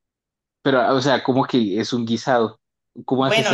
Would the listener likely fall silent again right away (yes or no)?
no